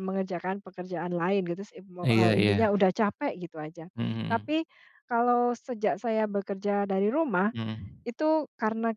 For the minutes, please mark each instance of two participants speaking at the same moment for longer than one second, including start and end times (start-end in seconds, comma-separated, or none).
none